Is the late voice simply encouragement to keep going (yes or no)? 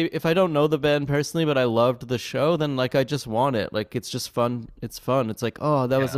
yes